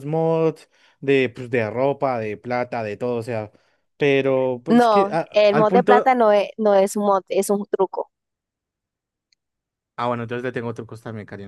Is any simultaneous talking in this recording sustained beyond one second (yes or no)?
yes